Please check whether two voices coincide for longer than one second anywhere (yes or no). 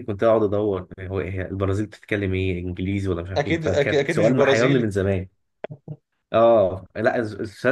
yes